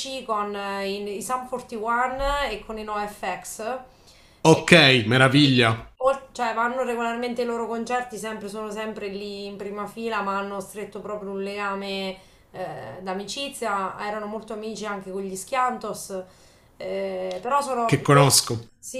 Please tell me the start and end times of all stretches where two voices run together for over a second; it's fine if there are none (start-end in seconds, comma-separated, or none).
4.5-5.9